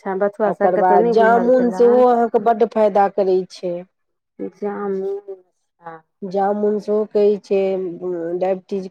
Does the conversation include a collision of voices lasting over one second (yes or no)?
yes